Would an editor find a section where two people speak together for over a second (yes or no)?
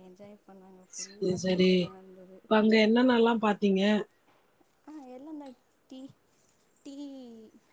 yes